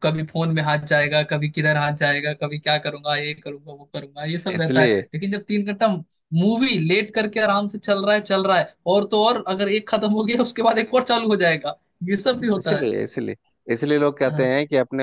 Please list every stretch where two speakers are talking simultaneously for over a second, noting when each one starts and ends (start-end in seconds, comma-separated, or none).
none